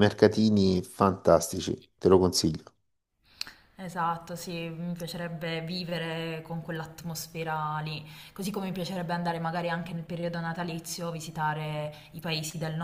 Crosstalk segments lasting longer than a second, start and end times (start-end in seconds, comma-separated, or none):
none